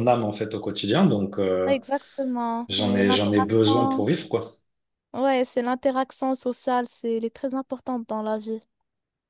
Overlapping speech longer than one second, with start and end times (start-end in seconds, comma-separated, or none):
2.7-4.1